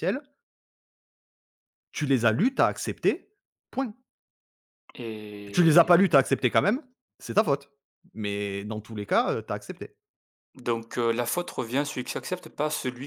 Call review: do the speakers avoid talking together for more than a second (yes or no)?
yes